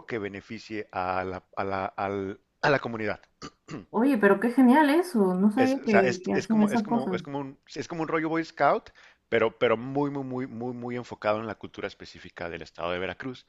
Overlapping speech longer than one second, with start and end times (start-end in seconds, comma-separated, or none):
5.6-7.2